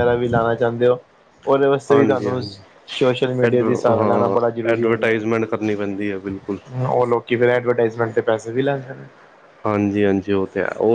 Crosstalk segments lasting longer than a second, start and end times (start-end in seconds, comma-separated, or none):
3.4-5.2